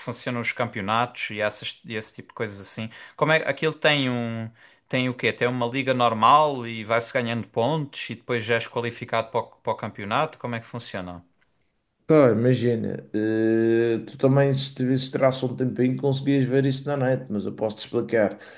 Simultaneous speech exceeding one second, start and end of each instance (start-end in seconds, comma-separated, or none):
none